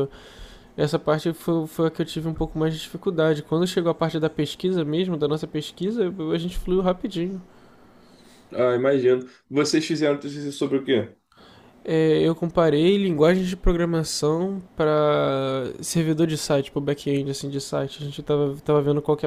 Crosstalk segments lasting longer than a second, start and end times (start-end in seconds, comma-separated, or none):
none